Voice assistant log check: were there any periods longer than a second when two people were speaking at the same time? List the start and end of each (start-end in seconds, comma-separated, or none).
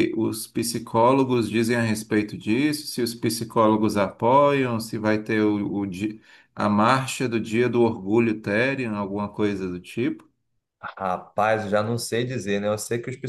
none